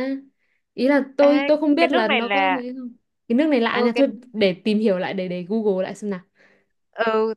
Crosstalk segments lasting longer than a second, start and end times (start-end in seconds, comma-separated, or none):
1.2-2.6